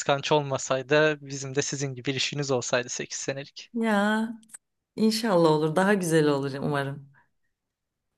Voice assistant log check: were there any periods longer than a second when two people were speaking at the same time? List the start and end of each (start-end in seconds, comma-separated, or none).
none